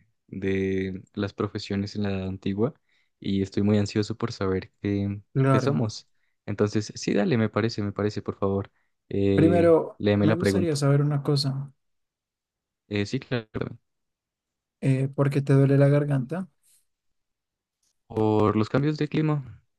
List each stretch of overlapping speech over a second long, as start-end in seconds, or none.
9.3-10.9